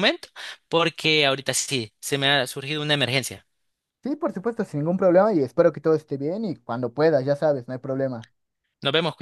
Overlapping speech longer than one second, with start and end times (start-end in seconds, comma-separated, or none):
none